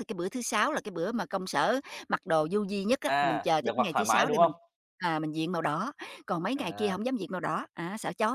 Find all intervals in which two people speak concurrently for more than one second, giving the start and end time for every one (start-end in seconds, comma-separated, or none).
3.1-4.5